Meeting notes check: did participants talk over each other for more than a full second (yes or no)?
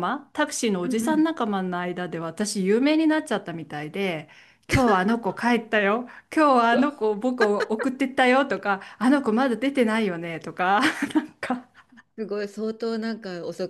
no